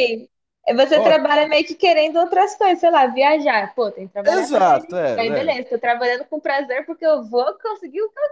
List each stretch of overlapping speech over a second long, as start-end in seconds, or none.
4.2-5.6